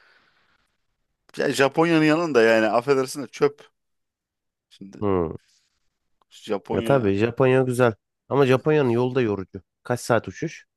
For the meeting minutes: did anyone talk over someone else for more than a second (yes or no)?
no